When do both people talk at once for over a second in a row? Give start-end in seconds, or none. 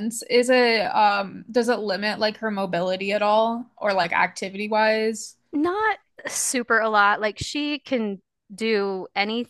none